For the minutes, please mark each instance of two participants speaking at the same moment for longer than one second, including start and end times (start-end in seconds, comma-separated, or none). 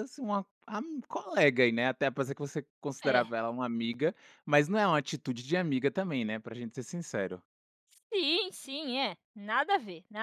none